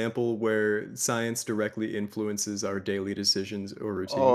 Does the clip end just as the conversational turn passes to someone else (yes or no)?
yes